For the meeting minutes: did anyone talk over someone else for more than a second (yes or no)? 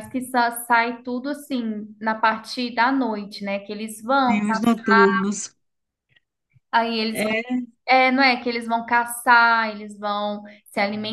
no